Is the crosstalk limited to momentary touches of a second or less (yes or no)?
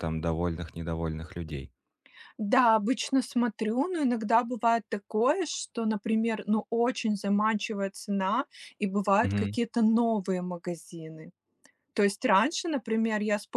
yes